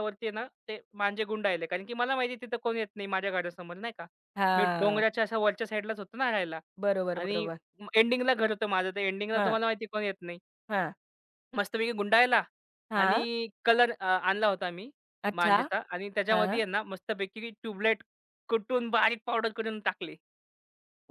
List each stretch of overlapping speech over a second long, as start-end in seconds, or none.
none